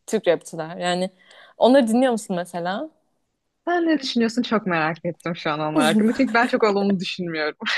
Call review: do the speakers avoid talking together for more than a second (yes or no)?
yes